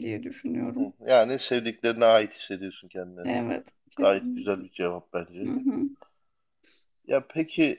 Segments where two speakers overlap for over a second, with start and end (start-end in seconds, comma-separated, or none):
none